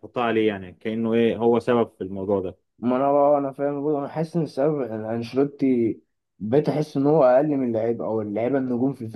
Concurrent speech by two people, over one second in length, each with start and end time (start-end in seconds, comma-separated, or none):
none